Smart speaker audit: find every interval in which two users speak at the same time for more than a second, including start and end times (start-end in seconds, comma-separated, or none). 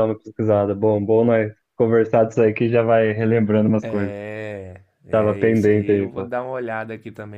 5.1-6.3